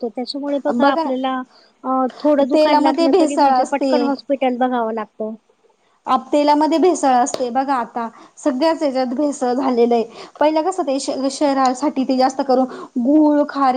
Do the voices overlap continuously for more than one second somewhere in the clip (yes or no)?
yes